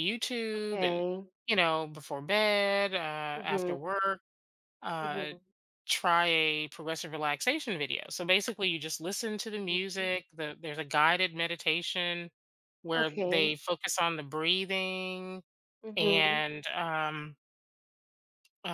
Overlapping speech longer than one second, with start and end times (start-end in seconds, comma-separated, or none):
none